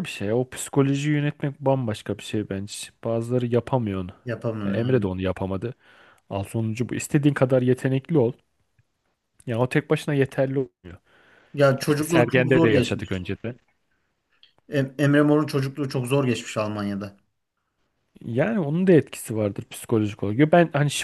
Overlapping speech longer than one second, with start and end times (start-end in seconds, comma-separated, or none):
11.8-13.3